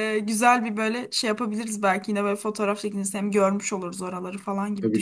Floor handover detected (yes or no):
yes